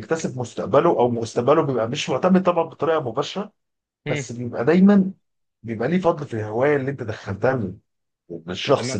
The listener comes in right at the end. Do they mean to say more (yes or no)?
yes